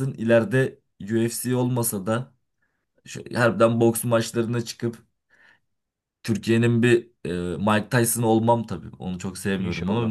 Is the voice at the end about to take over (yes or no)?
no